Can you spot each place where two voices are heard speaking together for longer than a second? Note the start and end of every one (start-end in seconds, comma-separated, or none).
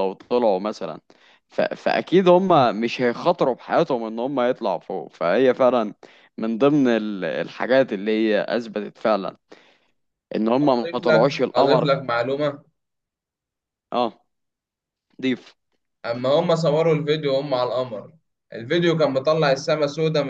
10.6-11.9